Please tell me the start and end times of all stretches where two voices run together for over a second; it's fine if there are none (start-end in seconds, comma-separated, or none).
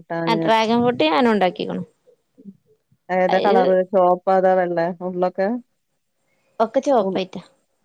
none